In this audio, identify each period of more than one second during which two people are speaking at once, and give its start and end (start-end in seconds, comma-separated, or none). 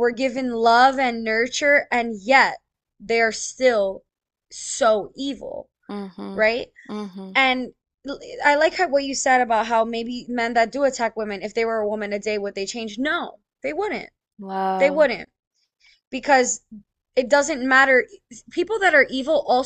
none